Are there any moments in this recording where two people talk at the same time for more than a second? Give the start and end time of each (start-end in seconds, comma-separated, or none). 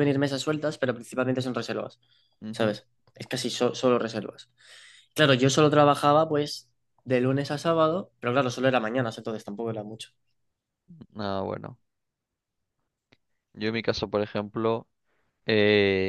none